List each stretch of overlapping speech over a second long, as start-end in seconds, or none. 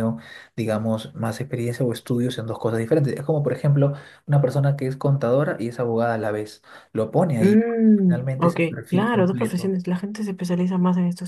7.4-9.8